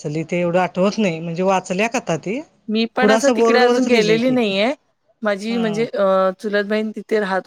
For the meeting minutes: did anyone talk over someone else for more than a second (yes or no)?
yes